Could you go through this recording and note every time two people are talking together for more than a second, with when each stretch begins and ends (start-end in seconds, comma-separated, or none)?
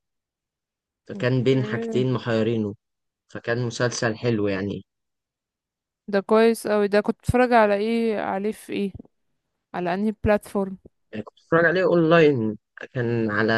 none